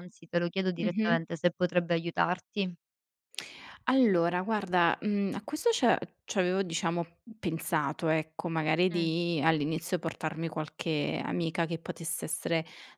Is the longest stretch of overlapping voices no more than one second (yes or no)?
yes